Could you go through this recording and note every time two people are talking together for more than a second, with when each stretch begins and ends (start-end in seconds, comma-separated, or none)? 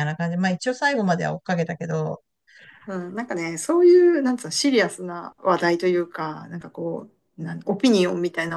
none